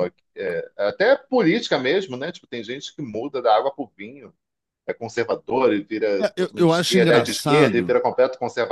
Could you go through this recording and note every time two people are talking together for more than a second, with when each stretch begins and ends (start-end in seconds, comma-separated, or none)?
6.2-8.0